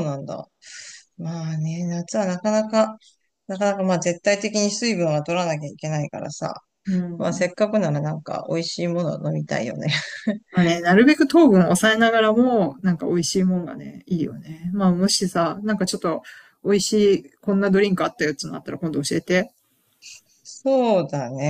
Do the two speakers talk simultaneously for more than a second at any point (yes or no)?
no